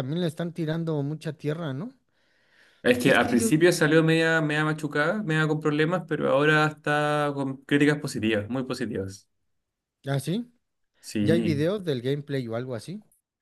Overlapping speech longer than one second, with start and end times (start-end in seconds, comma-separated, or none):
none